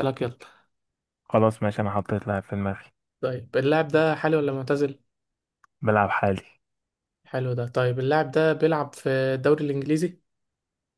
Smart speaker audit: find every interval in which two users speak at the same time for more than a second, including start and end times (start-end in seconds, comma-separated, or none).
none